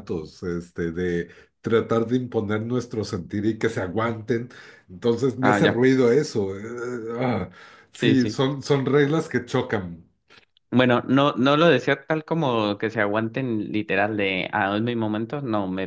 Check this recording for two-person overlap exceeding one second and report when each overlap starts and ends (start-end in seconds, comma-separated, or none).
none